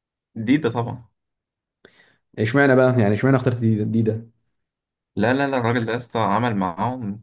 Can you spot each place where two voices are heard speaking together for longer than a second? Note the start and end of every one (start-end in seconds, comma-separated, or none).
none